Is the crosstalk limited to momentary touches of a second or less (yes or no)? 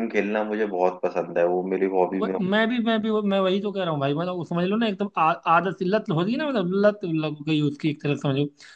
yes